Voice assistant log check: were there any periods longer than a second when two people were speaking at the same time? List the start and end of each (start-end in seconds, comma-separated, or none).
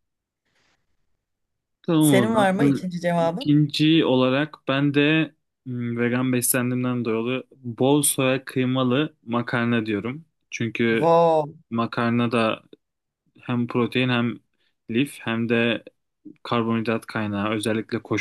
2.0-3.6